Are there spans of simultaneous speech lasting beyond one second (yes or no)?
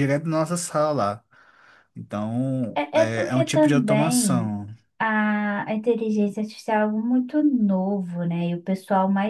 yes